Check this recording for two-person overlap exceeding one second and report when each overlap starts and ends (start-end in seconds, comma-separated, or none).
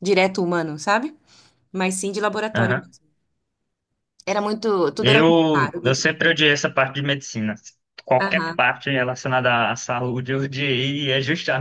5.0-6.4